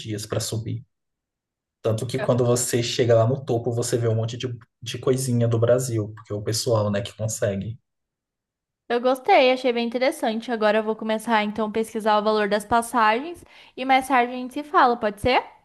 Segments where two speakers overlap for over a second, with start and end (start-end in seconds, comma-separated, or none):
none